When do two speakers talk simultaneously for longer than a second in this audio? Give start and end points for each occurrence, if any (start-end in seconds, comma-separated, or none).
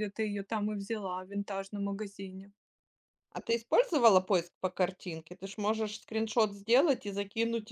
none